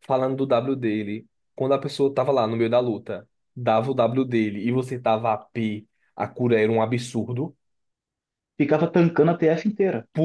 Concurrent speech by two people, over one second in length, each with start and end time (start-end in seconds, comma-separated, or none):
none